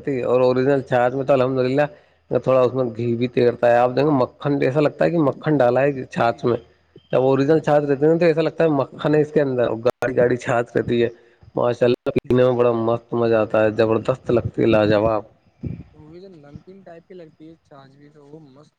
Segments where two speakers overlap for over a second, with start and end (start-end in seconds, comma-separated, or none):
none